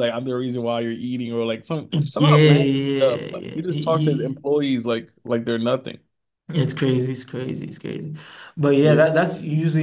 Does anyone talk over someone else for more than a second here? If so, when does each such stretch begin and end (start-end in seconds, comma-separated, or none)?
1.9-4.5